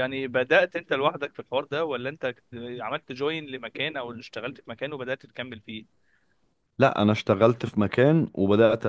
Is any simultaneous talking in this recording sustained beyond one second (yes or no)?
no